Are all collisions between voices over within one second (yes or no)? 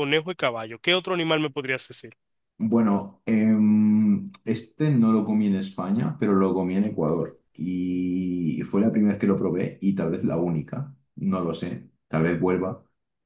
yes